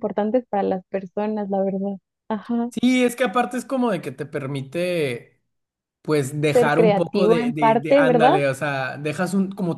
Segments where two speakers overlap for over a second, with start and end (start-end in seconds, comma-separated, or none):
6.5-8.4